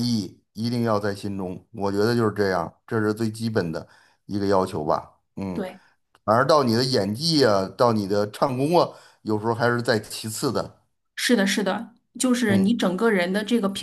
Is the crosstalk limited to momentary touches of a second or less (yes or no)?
yes